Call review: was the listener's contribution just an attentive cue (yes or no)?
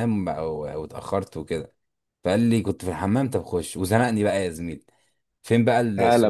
yes